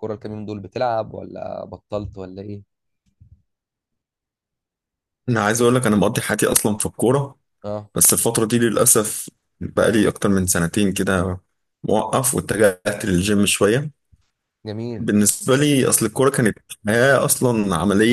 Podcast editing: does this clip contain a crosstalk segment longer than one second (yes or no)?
no